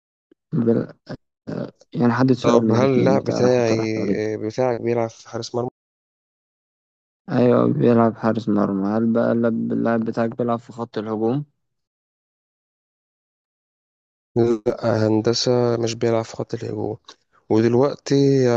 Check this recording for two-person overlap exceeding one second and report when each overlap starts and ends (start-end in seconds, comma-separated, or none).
2.5-3.8